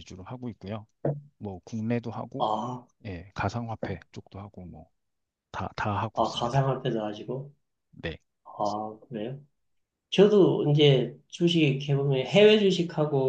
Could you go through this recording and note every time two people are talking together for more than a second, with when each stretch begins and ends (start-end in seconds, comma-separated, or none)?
none